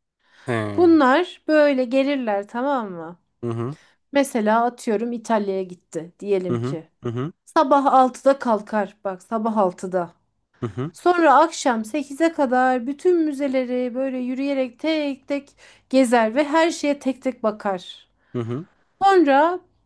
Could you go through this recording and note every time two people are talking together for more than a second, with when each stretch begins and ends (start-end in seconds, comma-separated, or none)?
none